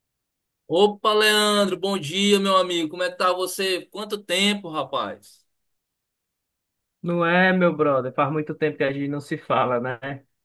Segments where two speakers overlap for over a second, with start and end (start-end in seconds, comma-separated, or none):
none